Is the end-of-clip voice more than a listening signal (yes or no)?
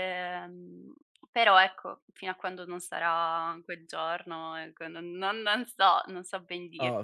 yes